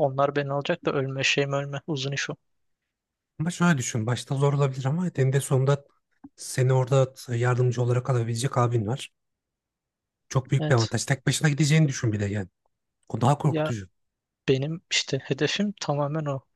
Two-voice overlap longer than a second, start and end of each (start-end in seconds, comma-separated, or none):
none